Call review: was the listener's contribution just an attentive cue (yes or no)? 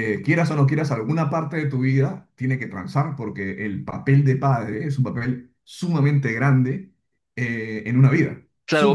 no